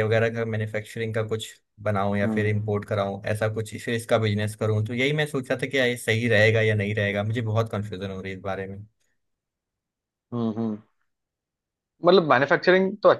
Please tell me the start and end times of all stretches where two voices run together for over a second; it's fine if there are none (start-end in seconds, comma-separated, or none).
none